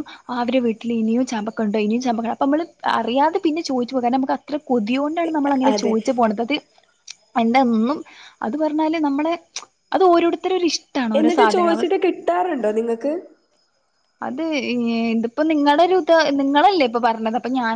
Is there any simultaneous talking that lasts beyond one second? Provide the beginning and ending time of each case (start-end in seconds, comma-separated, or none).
none